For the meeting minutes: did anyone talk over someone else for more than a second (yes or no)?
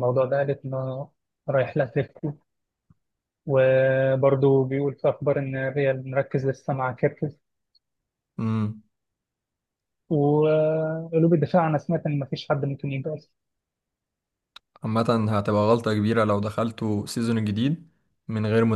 no